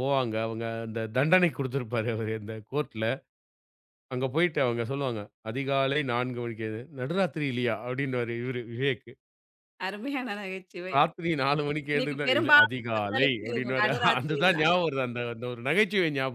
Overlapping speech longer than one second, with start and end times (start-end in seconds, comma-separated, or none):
11.9-14.7